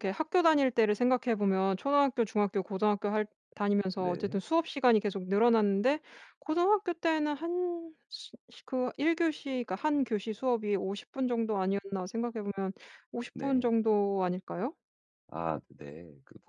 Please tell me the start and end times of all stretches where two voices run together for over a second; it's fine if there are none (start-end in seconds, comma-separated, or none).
none